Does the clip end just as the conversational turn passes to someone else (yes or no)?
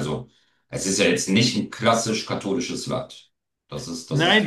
yes